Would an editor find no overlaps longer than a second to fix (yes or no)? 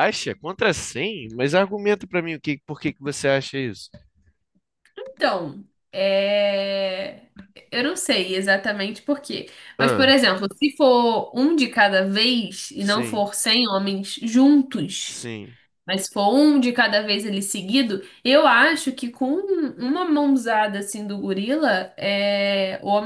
yes